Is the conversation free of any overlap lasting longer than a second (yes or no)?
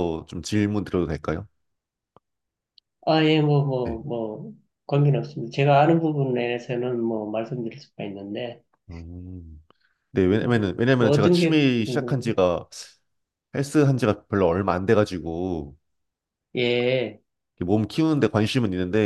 no